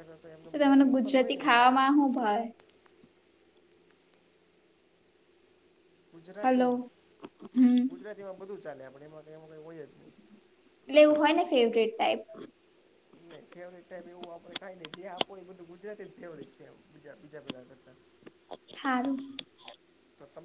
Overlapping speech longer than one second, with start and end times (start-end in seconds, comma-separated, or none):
0.6-1.8